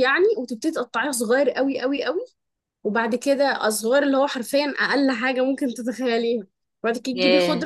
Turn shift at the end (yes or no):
no